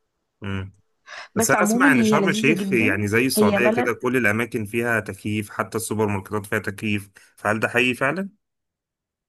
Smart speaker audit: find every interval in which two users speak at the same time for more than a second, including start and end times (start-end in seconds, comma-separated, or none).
1.4-3.9